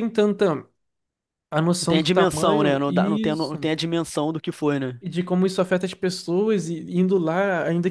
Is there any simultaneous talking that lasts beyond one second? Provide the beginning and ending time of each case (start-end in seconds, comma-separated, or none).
1.8-3.7